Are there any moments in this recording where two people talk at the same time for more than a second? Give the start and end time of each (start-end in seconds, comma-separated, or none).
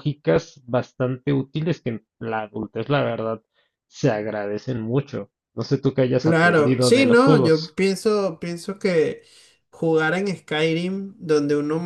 6.2-7.7